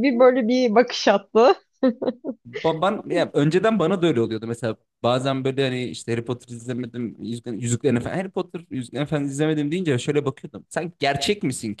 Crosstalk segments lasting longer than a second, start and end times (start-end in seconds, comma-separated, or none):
none